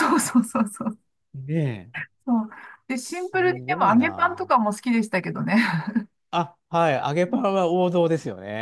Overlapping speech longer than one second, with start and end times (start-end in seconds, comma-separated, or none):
3.0-4.5